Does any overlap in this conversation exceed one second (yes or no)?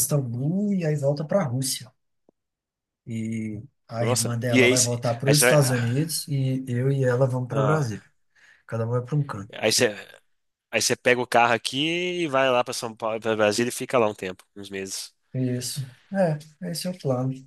yes